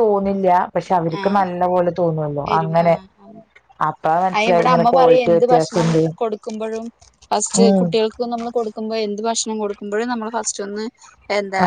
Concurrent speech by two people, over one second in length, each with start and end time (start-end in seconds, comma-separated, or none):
4.4-6.0